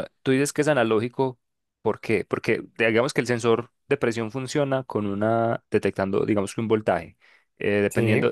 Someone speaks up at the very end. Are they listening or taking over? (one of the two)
listening